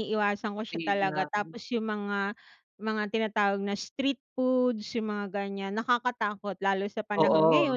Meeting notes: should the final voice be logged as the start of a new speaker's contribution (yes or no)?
no